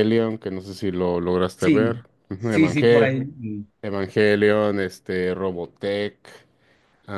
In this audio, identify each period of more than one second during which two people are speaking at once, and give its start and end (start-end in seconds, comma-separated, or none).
1.6-3.3